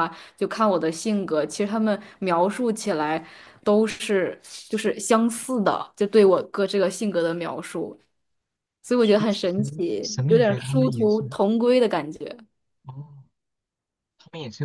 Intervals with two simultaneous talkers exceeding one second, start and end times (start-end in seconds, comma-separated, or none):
9.0-11.4